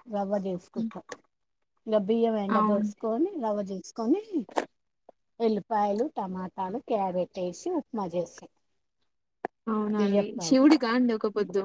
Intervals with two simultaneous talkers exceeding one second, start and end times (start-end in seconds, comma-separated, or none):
none